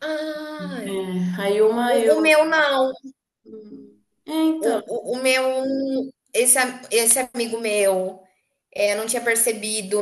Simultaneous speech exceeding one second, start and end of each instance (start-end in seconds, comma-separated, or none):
none